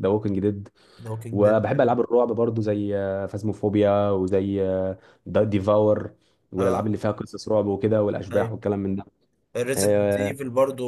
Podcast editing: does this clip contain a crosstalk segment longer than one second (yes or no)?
no